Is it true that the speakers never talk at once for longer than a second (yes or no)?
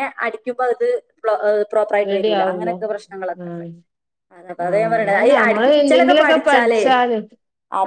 no